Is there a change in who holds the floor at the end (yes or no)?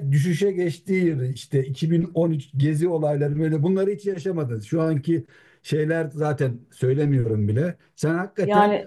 no